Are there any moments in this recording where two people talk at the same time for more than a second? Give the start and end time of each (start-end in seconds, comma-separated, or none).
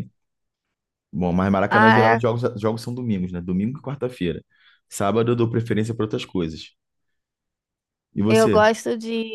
none